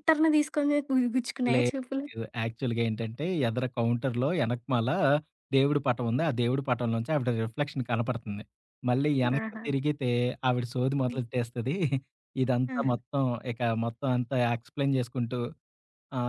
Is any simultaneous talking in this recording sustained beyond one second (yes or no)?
no